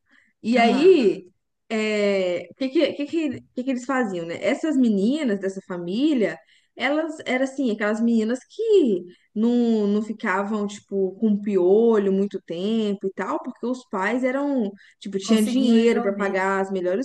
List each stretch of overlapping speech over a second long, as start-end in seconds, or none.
15.2-16.4